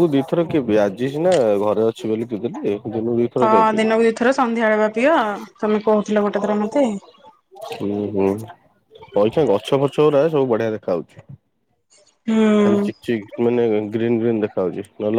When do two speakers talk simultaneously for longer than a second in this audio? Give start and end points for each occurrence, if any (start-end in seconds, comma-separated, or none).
none